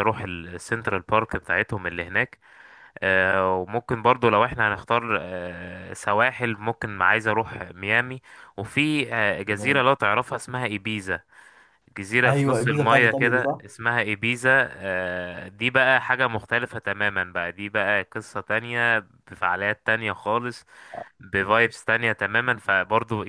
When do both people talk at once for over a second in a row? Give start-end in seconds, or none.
12.2-13.6